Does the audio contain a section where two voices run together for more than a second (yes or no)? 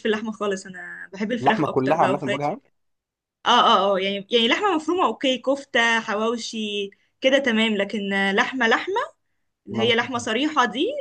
yes